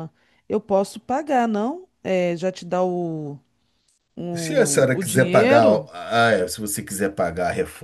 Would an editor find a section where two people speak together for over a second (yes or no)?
yes